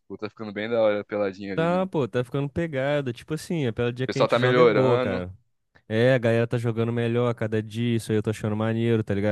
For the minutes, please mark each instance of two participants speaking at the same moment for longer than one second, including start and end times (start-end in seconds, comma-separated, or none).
4.0-5.2